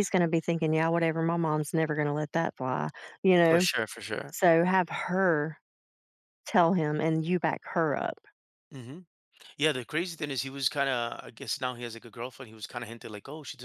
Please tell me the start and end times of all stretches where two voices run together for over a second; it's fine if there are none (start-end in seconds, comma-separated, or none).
none